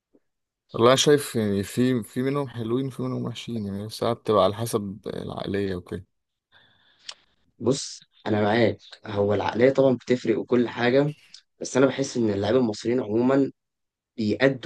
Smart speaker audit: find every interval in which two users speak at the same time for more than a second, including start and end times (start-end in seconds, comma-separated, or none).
none